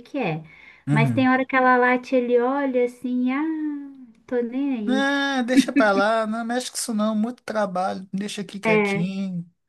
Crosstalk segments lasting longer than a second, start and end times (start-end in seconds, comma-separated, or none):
none